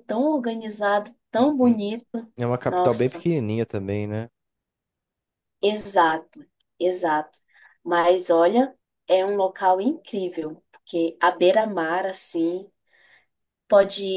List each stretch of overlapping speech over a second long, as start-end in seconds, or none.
none